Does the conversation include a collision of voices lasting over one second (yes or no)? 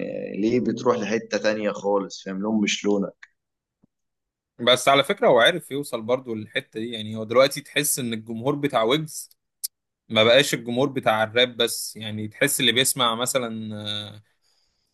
no